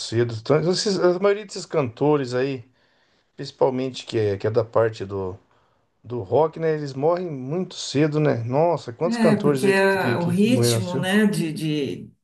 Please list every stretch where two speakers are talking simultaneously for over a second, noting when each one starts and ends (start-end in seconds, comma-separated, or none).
9.0-11.1